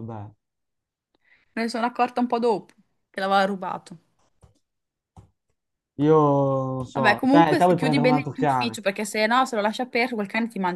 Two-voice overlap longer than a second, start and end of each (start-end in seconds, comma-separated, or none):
6.9-8.8